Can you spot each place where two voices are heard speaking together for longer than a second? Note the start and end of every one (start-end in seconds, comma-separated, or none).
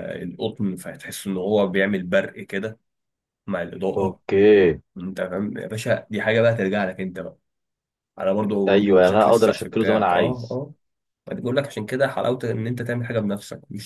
8.7-10.6